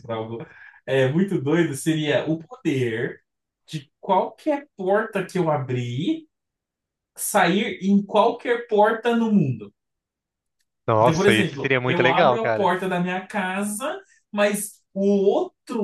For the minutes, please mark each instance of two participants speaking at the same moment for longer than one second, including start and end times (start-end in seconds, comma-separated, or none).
11.0-12.7